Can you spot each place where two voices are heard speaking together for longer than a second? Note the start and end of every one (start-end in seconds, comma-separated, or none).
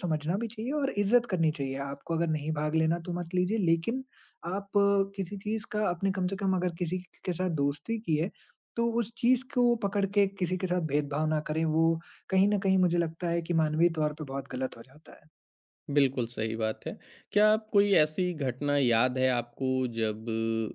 none